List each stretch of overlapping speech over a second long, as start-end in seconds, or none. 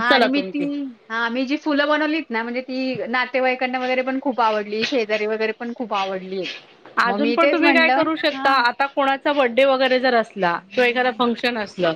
7.1-8.6